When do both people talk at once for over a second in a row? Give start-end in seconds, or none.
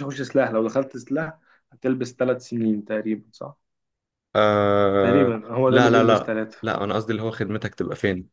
5.0-6.6